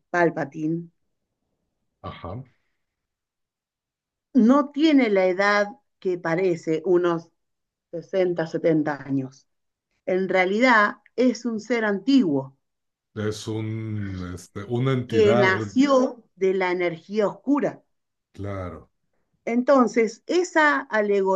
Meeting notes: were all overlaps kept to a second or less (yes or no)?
yes